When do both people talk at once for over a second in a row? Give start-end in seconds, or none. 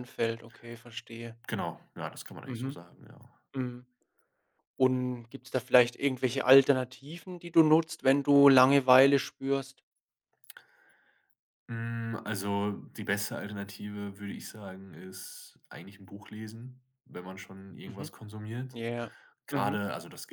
none